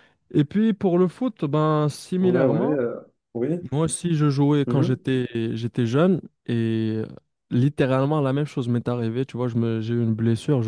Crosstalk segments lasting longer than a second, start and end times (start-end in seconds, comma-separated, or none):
none